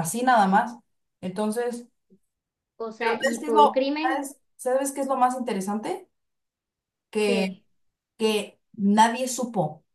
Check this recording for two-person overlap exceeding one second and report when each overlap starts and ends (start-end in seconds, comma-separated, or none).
3.0-4.2